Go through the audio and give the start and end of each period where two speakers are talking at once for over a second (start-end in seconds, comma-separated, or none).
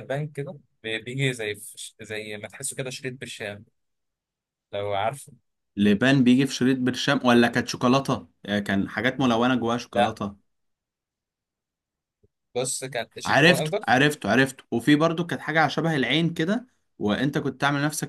none